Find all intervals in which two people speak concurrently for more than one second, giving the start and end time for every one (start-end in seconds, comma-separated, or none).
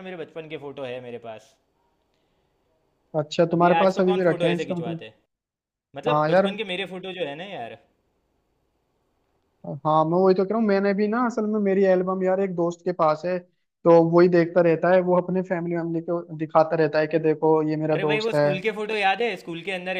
3.5-5.0